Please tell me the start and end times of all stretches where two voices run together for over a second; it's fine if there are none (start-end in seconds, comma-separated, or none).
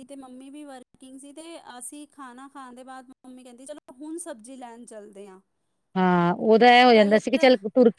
none